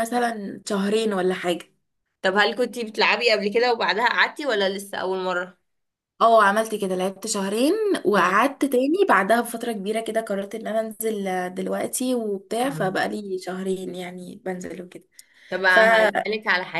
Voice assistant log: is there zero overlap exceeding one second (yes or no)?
yes